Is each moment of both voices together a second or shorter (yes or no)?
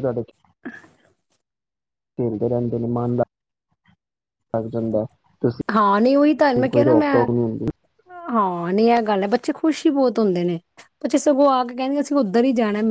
yes